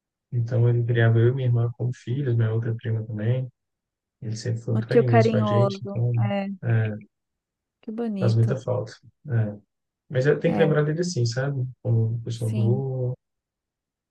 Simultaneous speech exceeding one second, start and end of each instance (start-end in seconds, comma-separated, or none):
4.7-6.1